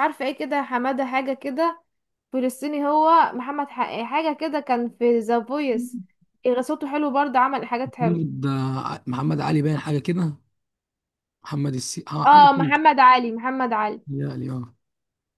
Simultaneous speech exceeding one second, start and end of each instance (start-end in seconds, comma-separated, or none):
none